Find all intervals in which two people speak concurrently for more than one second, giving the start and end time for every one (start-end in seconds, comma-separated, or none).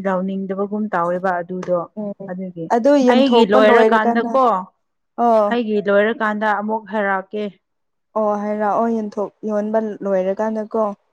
3.1-4.3